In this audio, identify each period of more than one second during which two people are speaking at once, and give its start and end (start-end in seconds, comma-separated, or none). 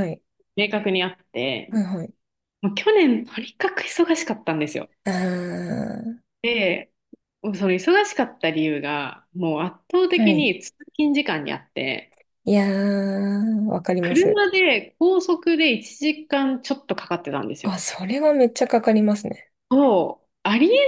none